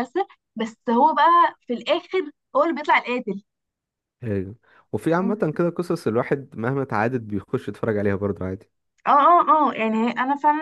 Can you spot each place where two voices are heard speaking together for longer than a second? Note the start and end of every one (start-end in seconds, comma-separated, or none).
none